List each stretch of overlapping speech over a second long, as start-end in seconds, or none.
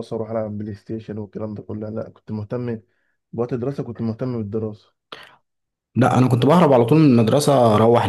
none